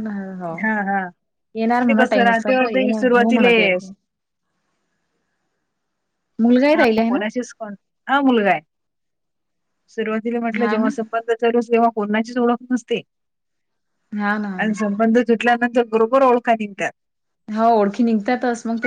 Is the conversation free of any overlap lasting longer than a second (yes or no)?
no